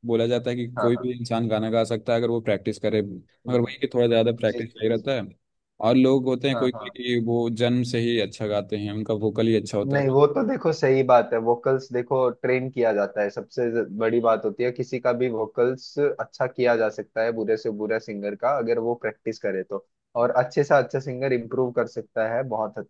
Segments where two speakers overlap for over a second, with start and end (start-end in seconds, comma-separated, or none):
none